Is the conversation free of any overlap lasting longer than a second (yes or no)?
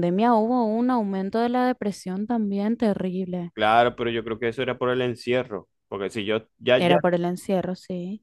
yes